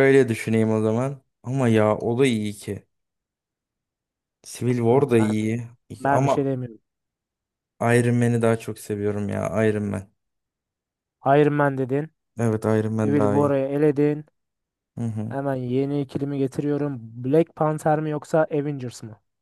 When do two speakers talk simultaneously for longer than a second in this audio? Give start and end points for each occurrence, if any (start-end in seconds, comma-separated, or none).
none